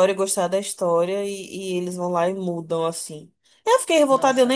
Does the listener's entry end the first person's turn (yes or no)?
yes